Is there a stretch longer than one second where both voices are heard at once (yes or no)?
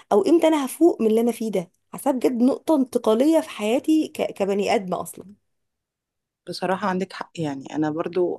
no